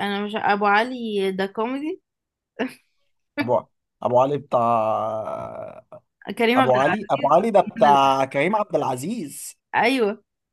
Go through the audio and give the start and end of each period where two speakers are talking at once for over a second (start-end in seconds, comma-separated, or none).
6.6-8.2